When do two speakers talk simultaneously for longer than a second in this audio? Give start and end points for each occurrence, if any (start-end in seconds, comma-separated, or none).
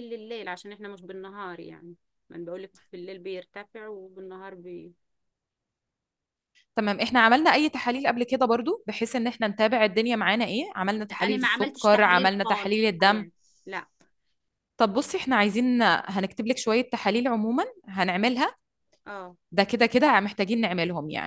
11.1-13.3